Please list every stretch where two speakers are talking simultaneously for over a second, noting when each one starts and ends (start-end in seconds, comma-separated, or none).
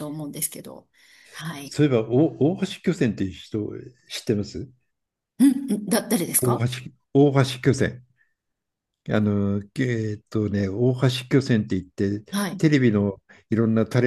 none